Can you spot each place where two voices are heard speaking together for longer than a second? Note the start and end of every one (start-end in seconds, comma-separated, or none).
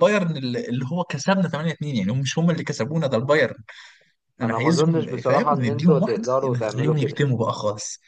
4.4-7.2